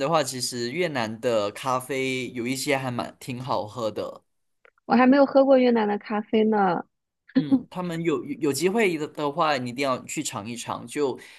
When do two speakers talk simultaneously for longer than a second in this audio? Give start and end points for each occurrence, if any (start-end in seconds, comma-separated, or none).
none